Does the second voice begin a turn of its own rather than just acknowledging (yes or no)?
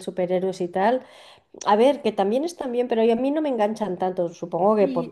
yes